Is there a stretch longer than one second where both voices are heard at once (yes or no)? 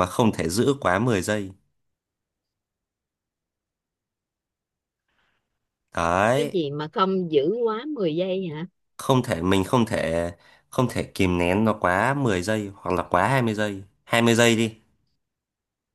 no